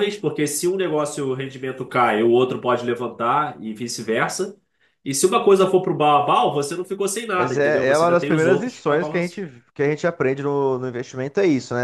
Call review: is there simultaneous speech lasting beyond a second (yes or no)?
yes